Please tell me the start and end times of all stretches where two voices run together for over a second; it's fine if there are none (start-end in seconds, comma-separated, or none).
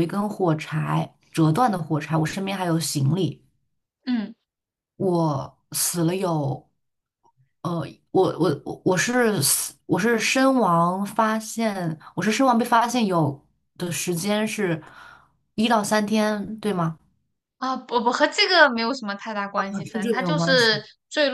19.5-20.8